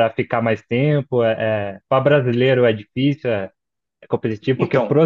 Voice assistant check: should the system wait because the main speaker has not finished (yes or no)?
yes